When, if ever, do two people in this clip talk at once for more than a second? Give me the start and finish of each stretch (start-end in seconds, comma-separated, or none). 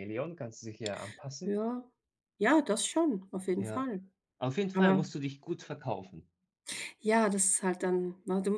none